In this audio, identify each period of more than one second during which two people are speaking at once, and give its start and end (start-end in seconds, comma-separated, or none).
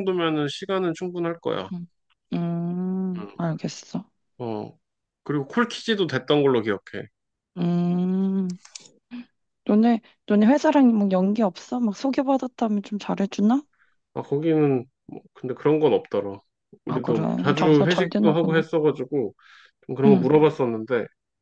16.9-18.6